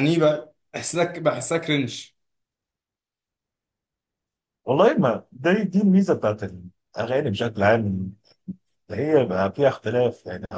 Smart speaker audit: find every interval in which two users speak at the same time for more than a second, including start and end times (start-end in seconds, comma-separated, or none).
none